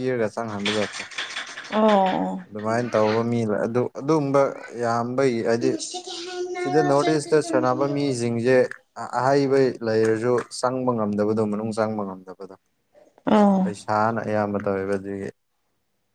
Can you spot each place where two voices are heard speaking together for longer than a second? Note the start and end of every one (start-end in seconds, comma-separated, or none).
6.6-8.2